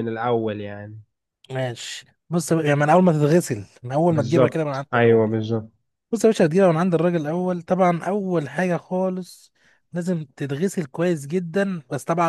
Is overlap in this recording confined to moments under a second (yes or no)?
no